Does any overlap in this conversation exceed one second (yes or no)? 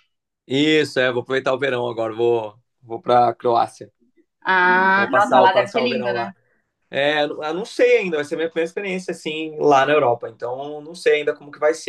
yes